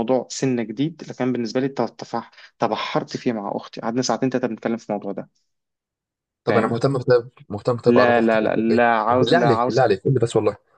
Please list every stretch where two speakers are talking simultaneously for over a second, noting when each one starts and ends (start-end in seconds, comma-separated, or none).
7.9-9.8